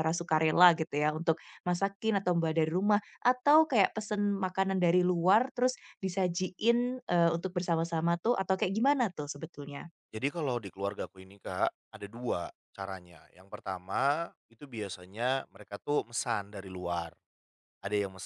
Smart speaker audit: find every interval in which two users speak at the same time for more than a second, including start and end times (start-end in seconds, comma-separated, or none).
none